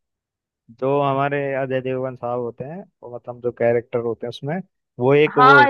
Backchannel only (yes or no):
no